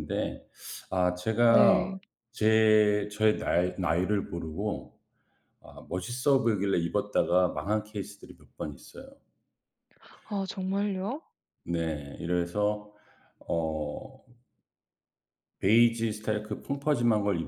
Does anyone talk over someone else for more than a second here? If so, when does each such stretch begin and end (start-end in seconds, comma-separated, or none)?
none